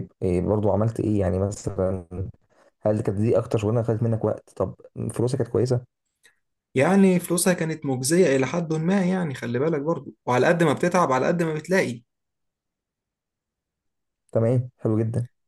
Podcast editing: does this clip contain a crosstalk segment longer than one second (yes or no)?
no